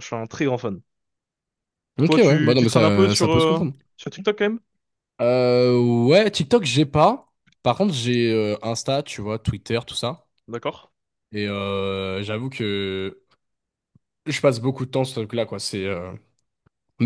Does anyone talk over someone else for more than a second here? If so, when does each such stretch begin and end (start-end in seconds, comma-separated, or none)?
2.0-3.7